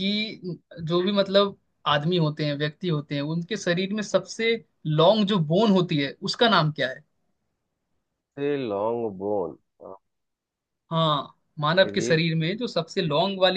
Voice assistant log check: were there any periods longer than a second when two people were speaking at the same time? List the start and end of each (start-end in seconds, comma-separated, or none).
none